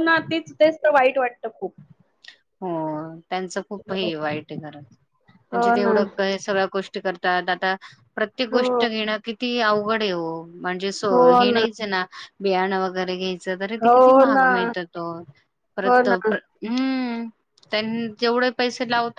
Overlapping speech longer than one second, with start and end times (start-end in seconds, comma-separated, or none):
none